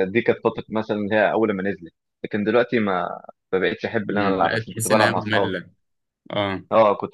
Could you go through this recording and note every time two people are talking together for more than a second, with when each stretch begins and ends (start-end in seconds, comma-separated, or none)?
4.1-5.5